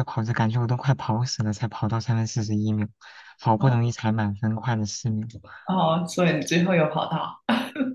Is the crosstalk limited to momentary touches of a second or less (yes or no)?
yes